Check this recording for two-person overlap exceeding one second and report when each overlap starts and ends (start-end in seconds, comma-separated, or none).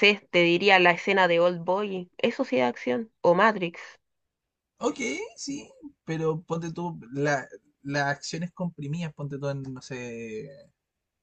none